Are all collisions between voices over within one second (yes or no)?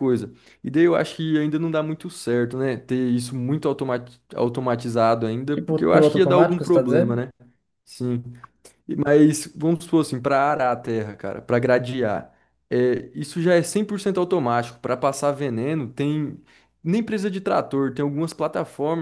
no